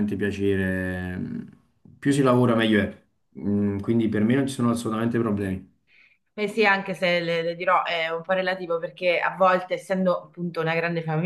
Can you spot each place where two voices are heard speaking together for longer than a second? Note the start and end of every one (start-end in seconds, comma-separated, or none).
none